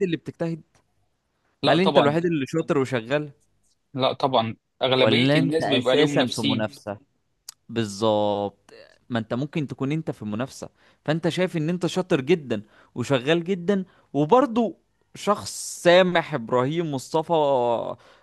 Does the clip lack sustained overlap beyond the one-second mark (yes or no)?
no